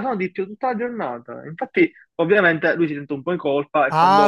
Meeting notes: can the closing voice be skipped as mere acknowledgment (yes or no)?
no